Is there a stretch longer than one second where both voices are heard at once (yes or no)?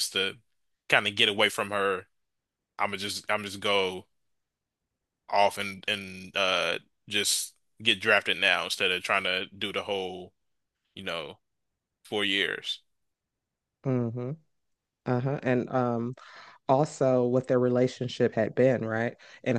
no